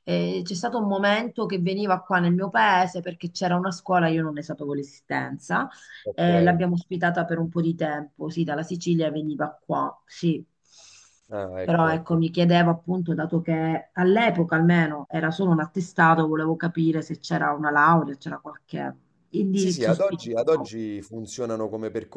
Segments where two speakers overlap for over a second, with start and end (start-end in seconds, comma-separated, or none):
19.5-20.7